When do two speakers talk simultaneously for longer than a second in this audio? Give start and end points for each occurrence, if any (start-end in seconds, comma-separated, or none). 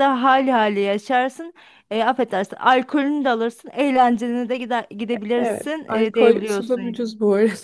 5.3-7.0